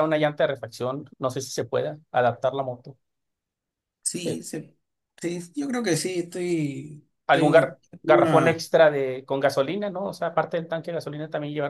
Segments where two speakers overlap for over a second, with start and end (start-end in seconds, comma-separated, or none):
7.3-8.6